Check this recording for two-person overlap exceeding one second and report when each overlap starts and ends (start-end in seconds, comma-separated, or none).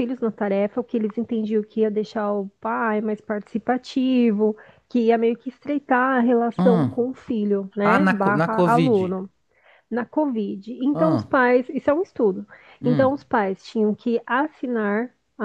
7.8-9.2